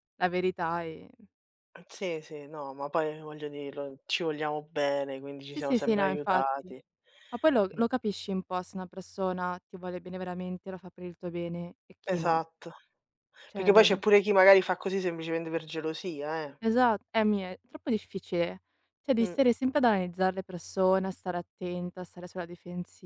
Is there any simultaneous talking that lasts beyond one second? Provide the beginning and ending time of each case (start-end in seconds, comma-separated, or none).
5.5-6.7